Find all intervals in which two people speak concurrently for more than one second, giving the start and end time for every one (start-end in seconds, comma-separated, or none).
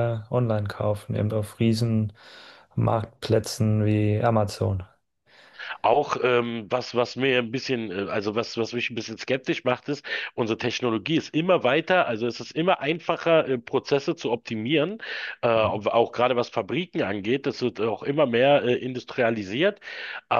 none